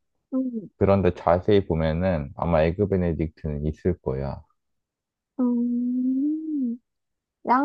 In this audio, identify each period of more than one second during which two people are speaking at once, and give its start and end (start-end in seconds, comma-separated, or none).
none